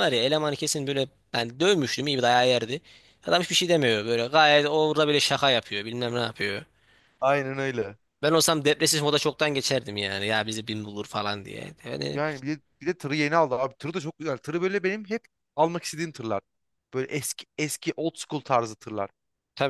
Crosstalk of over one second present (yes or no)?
no